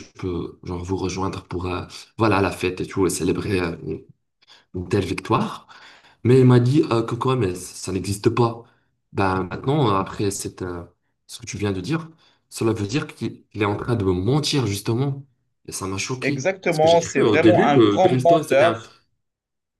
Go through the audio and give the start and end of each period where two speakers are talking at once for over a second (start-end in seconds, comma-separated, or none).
16.2-18.8